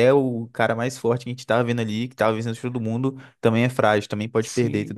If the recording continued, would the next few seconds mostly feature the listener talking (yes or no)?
yes